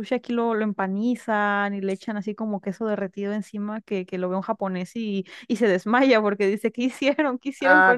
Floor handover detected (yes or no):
yes